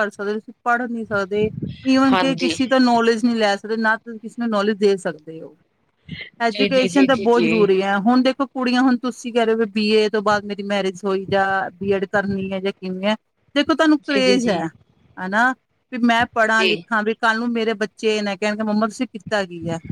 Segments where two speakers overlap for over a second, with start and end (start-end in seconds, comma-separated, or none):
6.5-7.8